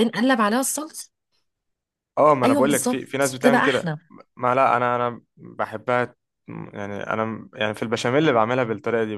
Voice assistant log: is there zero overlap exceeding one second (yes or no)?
no